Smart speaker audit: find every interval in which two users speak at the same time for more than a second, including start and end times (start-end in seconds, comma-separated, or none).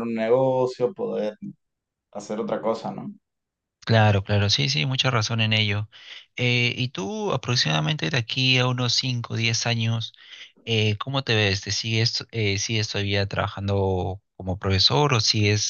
none